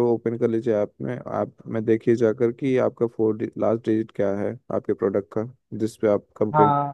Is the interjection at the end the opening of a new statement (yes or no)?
yes